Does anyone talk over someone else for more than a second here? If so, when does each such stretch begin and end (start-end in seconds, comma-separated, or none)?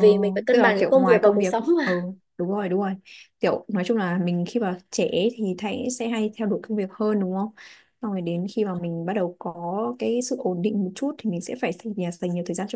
0.5-2.0